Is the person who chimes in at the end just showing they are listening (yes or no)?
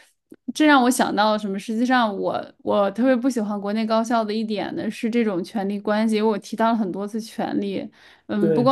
yes